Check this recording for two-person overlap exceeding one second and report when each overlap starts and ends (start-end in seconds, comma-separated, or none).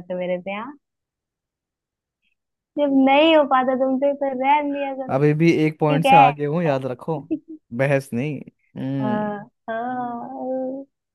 none